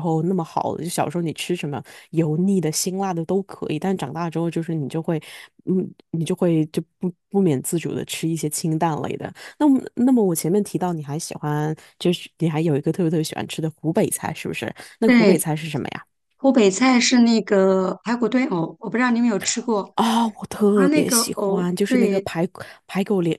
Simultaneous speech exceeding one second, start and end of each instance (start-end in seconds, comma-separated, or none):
20.7-22.3